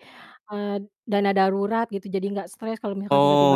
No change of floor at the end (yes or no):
no